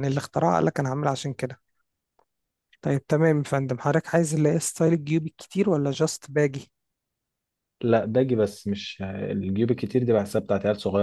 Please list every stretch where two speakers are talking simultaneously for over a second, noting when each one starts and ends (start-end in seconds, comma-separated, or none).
none